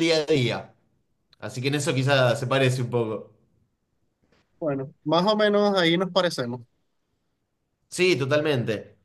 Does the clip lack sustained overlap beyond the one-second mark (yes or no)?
yes